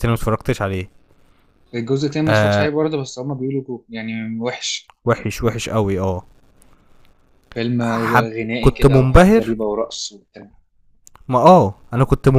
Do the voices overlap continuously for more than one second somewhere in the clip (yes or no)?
yes